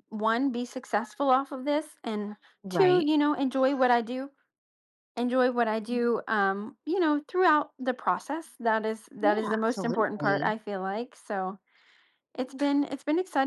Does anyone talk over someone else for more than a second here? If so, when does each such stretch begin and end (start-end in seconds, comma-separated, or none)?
9.2-10.5